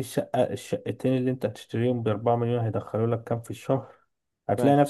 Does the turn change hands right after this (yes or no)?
no